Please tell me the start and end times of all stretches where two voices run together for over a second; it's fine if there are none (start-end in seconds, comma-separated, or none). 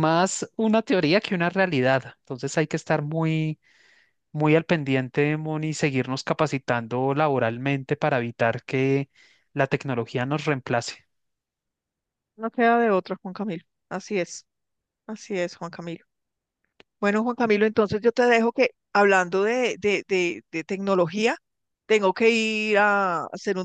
none